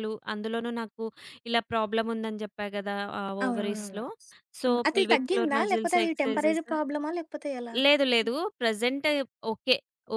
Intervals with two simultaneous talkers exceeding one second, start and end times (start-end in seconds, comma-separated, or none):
4.7-6.6